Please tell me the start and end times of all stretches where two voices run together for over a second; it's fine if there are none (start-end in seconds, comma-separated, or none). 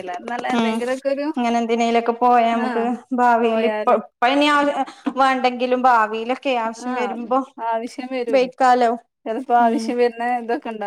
none